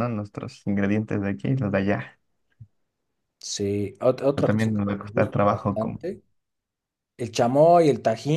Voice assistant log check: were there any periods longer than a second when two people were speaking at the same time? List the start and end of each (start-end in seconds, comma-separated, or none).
4.3-6.0